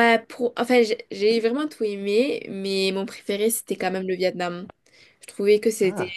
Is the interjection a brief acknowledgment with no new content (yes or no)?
yes